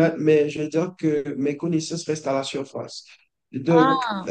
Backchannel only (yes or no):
yes